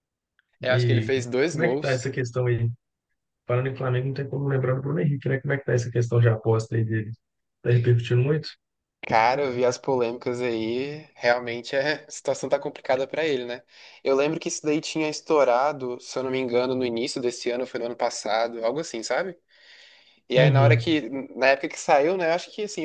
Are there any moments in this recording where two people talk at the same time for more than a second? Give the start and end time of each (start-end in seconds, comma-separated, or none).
0.7-2.1